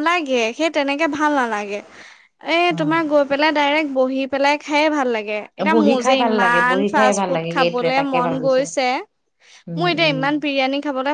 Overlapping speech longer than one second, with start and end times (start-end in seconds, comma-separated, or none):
5.7-8.6